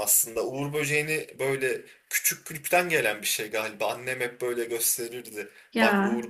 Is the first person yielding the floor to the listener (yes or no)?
no